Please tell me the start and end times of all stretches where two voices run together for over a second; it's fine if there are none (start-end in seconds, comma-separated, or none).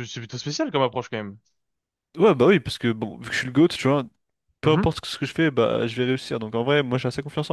none